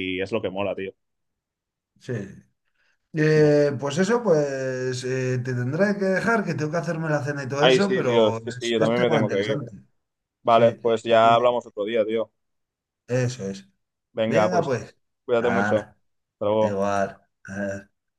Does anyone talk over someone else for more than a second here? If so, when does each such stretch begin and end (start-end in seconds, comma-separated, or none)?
7.6-9.6